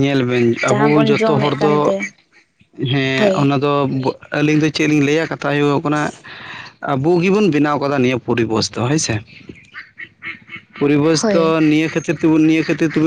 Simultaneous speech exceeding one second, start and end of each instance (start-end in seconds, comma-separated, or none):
0.7-1.9